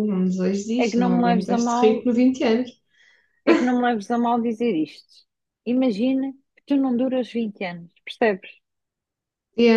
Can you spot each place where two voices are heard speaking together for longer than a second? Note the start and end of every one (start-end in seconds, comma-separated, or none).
0.8-2.0